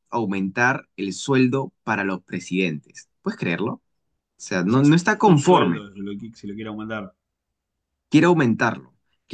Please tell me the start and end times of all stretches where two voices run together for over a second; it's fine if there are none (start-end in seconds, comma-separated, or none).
4.6-5.9